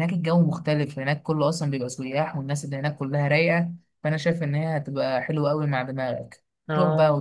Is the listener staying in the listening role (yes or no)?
yes